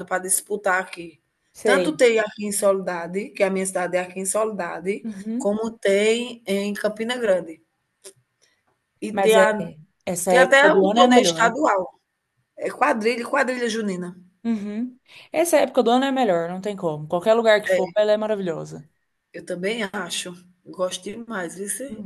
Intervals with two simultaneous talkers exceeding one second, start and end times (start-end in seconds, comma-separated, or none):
10.3-11.6